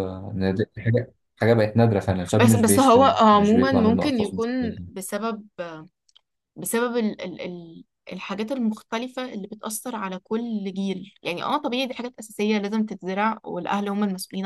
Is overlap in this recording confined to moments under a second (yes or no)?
no